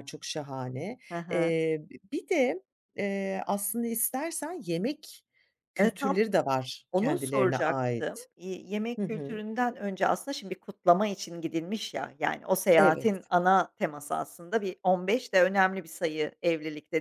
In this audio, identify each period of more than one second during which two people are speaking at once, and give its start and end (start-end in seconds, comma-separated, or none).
6.9-8.3